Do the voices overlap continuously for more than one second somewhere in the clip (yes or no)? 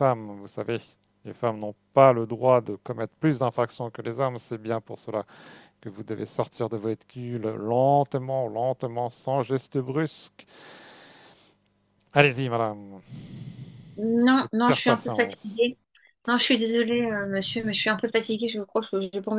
yes